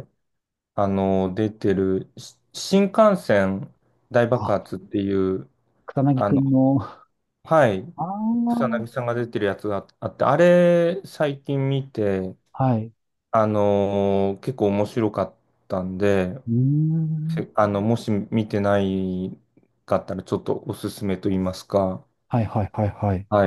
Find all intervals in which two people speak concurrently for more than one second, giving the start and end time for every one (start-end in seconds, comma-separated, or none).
none